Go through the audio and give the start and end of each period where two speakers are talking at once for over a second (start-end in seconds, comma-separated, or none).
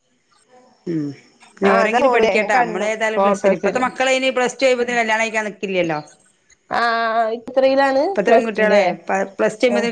1.7-3.8